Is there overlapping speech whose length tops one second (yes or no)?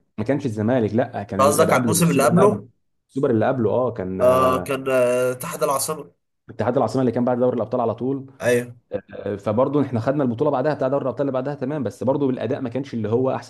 yes